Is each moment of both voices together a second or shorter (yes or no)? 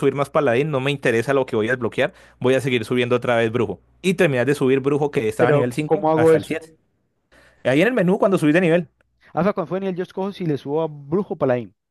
no